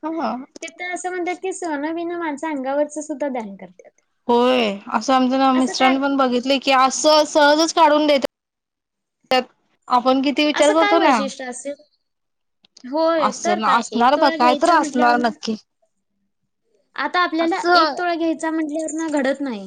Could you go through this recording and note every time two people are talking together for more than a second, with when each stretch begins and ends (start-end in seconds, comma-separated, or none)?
13.3-15.3